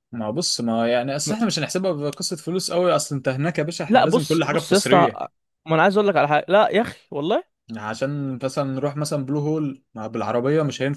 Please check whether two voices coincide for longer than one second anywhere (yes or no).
yes